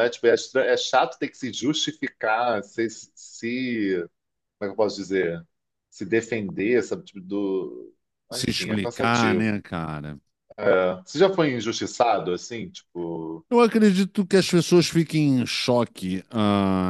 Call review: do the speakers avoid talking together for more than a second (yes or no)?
no